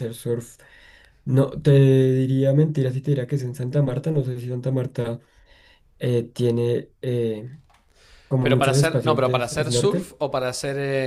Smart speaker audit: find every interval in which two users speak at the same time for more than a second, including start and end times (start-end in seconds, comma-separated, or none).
8.4-10.1